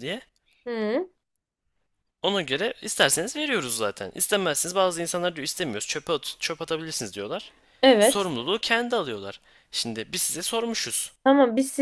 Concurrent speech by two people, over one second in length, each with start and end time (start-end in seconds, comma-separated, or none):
none